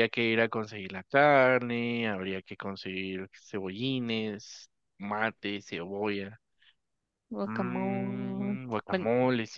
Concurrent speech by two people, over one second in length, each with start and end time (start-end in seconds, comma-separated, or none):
7.4-9.1